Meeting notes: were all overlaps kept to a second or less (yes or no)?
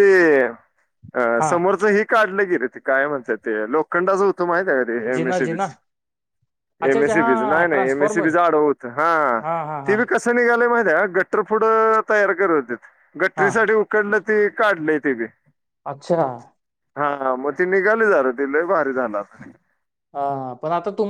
no